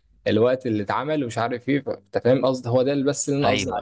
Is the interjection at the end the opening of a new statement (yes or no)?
yes